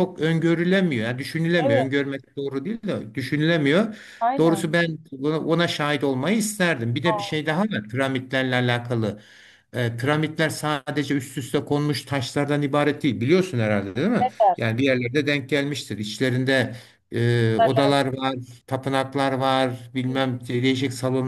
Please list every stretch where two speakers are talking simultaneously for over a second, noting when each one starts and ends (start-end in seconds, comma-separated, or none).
none